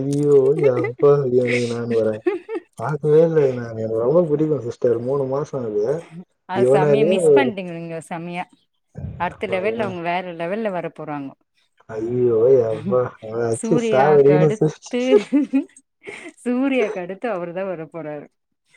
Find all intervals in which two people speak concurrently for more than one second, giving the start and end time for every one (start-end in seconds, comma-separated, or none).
13.6-15.0